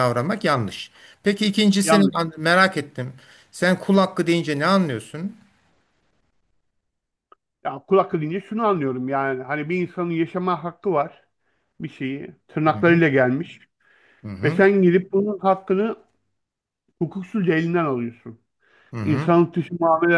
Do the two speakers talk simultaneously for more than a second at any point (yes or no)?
no